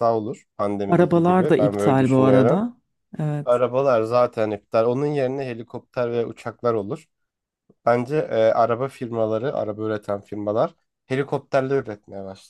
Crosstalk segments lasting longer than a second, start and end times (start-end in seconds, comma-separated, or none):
0.9-2.6